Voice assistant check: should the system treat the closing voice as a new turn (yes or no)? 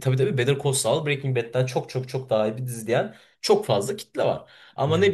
no